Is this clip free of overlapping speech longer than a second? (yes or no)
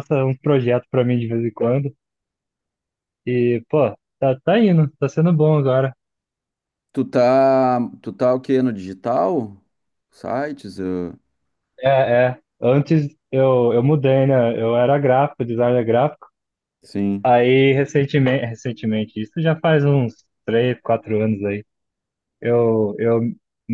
yes